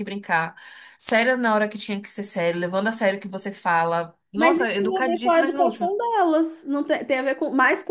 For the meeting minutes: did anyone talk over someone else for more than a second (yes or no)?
yes